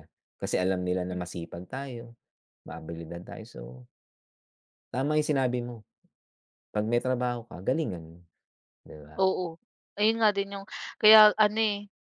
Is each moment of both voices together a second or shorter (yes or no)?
yes